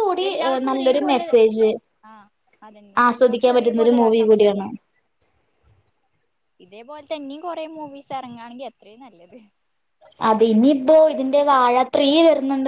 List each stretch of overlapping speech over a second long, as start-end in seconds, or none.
3.0-4.7